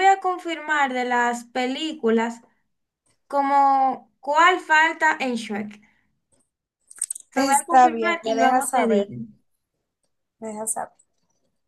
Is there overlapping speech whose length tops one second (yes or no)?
yes